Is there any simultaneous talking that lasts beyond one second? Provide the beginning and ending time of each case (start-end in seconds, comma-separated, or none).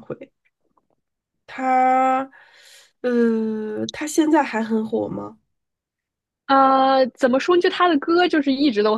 none